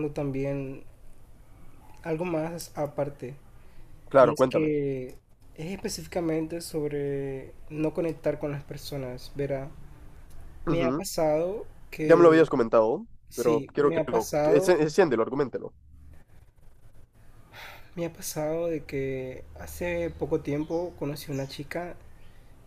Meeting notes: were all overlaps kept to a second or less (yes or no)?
no